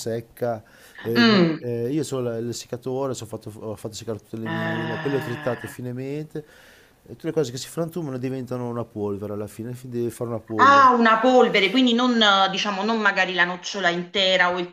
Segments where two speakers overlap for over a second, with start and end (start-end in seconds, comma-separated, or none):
4.4-5.7